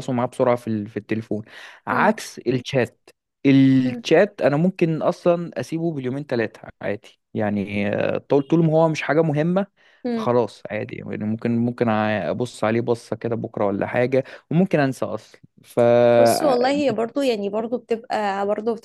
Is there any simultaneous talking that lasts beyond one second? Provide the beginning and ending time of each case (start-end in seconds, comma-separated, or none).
none